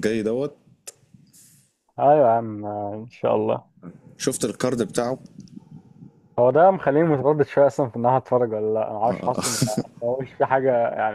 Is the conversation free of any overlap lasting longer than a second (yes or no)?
yes